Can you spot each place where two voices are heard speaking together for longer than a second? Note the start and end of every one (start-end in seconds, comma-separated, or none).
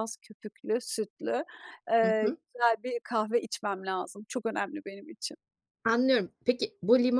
none